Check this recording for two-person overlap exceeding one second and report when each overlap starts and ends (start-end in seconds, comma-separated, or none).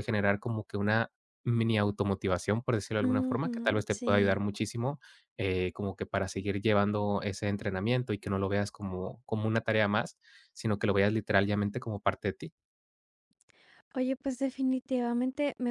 3.0-4.4